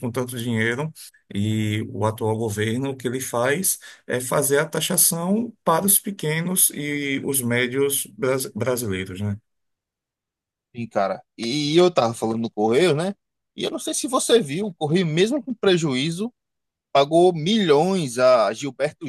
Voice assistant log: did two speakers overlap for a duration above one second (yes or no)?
no